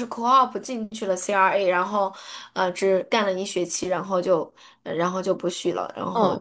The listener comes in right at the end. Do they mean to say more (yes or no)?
yes